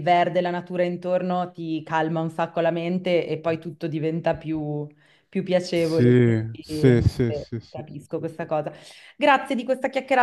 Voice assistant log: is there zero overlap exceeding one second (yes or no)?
no